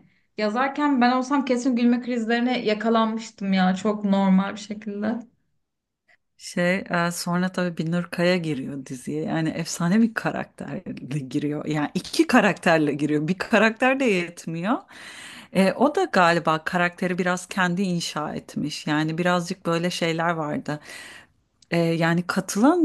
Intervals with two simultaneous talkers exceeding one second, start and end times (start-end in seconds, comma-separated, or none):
none